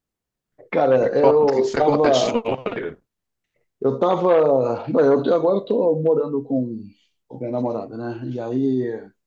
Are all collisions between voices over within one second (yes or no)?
no